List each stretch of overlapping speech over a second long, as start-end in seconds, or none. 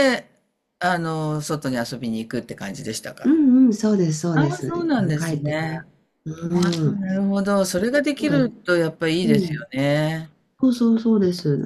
4.3-5.8